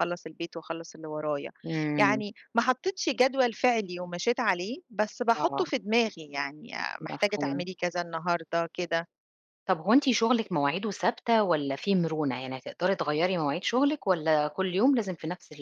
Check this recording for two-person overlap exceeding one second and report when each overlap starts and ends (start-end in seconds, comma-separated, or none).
none